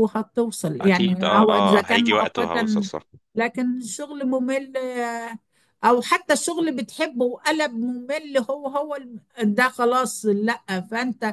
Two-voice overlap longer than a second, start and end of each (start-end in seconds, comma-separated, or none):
0.8-2.9